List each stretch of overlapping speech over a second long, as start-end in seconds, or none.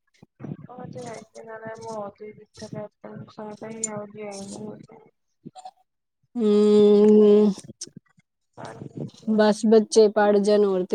none